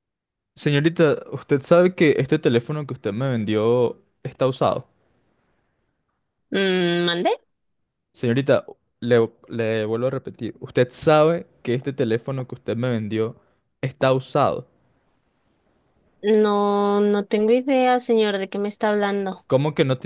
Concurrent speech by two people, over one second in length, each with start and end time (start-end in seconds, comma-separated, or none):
none